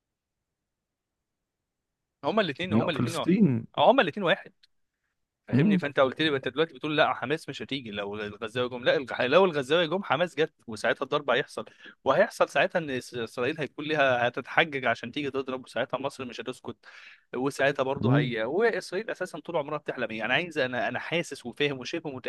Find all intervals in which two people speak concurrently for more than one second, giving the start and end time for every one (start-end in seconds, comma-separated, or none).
none